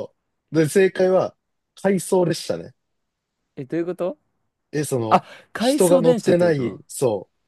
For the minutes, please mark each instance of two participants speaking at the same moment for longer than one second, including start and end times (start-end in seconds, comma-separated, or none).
5.1-6.8